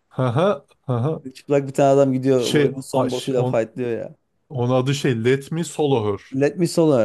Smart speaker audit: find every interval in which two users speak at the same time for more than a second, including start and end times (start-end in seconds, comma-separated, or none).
2.4-3.6